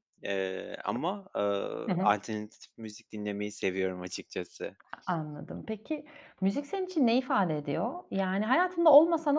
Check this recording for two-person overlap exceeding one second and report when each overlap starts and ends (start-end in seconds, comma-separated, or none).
none